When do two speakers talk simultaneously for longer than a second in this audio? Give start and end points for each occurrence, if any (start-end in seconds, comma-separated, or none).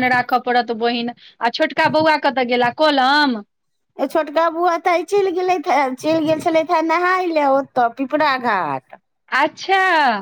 none